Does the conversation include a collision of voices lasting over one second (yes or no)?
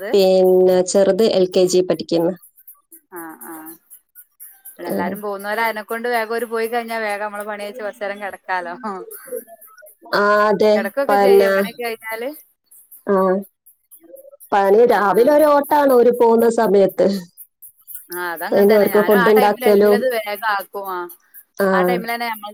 yes